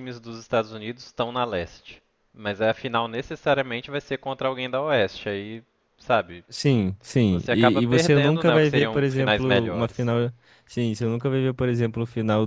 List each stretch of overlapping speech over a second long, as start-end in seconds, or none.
7.3-10.1